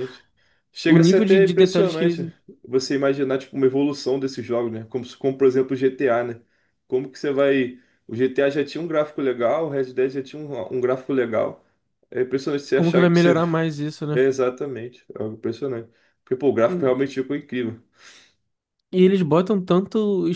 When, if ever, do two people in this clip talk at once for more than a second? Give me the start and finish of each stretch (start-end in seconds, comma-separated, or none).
0.8-2.3